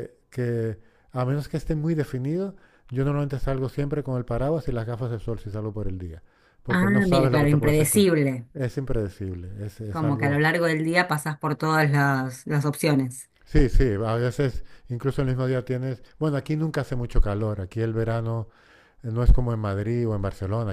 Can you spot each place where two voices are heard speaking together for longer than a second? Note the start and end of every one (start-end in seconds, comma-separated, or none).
6.7-8.1